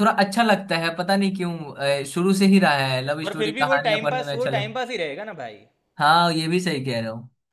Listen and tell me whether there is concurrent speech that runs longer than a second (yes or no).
yes